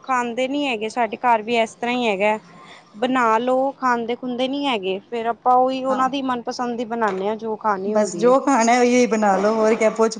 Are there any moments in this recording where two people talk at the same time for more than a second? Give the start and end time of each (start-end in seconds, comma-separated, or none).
none